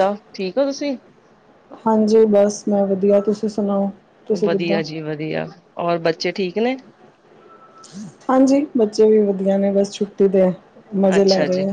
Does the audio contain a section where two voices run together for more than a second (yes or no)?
no